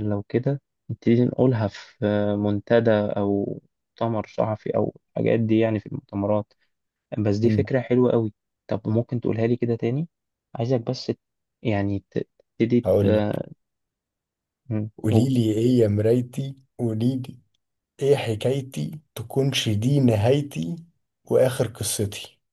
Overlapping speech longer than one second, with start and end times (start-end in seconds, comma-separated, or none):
none